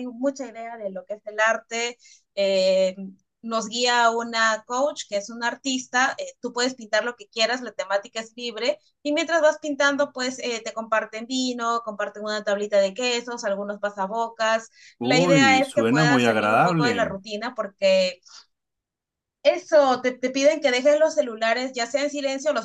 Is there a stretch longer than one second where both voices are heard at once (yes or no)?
yes